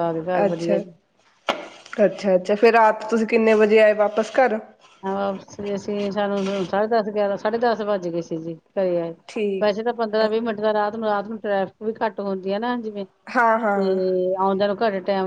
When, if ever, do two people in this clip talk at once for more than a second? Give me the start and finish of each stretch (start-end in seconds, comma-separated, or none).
none